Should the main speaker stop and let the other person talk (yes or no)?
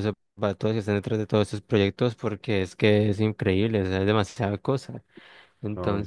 no